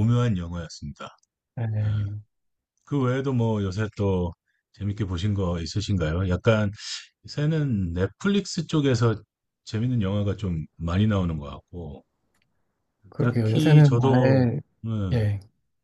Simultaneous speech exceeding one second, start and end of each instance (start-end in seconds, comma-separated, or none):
13.2-14.5